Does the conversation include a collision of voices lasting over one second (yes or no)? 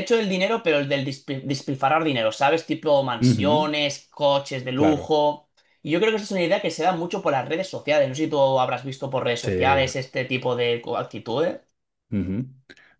no